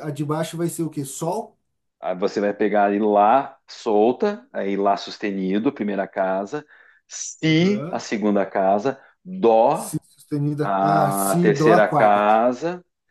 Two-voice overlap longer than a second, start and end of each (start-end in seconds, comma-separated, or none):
10.6-12.3